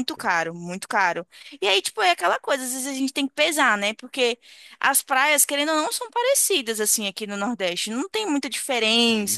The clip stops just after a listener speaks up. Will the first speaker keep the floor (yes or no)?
yes